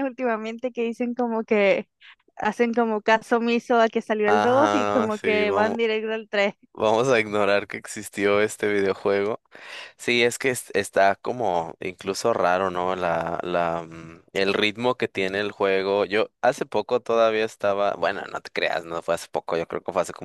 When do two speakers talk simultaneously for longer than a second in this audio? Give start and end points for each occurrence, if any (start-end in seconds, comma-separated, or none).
4.2-5.8